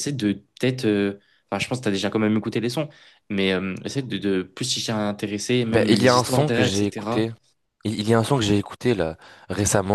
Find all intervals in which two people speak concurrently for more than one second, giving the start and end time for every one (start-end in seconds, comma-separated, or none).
5.7-7.2